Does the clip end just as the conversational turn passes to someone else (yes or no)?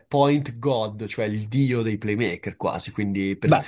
no